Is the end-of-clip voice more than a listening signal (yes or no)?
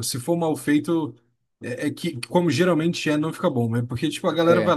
no